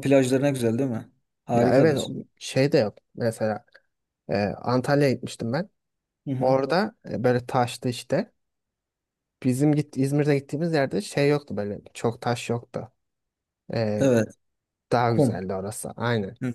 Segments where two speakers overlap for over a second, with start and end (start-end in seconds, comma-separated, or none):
none